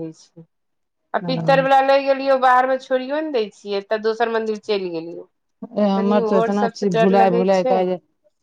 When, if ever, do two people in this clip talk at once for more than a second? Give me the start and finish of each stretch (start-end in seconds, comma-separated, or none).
6.0-7.8